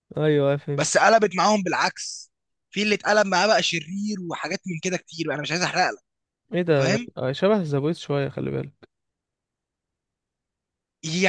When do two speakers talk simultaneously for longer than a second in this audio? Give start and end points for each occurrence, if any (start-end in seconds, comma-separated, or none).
none